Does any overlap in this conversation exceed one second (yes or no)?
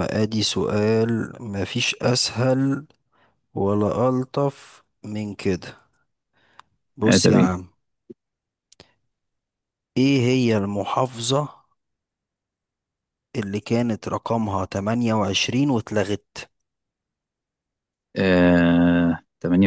no